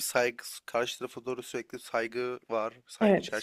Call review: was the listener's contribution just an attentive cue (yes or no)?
no